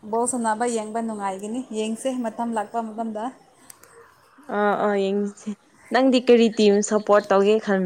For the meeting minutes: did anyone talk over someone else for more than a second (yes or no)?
no